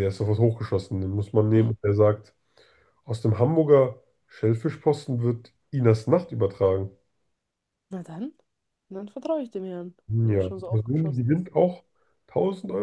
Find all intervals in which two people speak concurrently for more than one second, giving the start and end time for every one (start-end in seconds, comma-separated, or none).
10.1-11.5